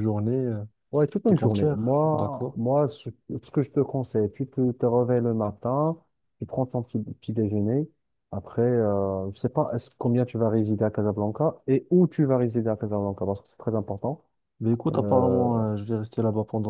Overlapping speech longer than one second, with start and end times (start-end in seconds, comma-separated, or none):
1.2-2.6